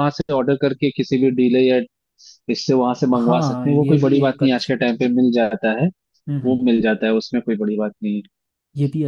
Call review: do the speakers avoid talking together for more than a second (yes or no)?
no